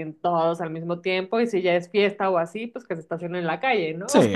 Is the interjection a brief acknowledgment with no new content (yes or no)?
no